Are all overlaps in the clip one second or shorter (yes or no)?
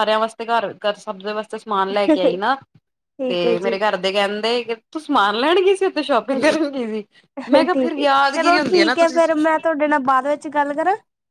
no